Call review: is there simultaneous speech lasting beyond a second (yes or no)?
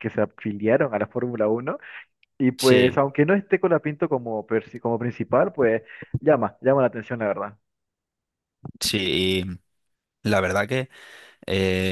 no